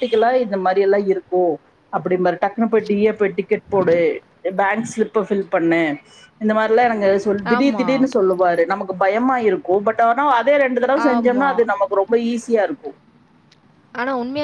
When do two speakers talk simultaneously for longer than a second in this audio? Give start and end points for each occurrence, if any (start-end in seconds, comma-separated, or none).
none